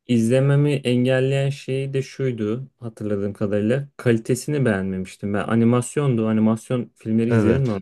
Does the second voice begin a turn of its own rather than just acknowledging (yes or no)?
no